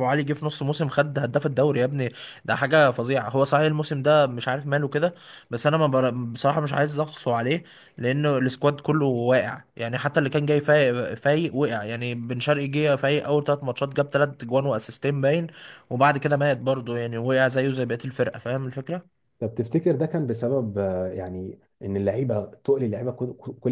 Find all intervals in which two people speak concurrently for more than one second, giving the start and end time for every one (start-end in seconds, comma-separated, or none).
none